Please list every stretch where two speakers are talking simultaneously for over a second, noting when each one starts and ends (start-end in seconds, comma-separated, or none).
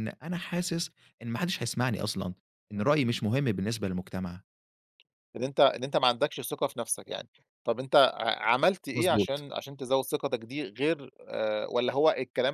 none